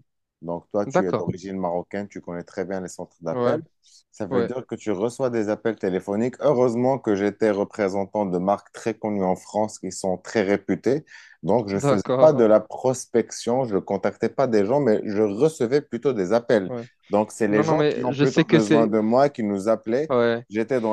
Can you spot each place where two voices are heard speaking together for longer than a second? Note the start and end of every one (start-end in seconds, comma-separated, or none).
17.5-18.9